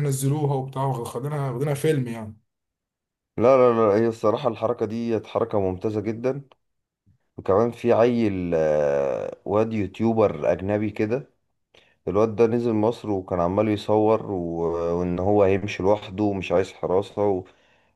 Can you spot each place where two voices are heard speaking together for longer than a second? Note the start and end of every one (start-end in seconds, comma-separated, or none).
none